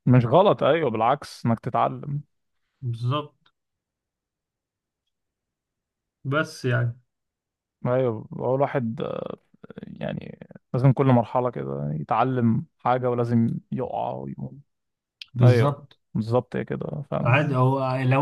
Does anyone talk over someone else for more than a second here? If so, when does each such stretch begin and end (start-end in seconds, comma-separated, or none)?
none